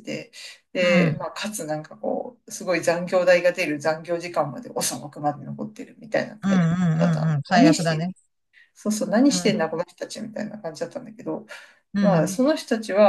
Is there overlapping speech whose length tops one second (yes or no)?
yes